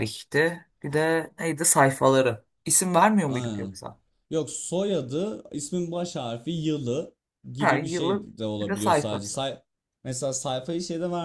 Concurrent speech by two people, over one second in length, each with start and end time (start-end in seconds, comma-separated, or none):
7.6-9.4